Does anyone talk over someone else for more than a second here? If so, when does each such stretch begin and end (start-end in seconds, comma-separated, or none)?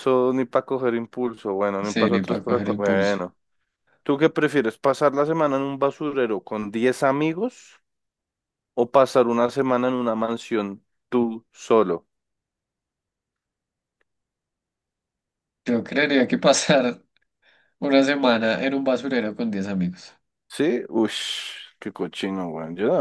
1.8-3.1